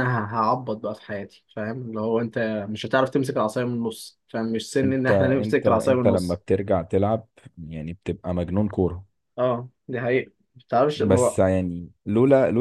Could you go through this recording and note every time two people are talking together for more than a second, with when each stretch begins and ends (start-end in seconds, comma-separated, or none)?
4.8-6.4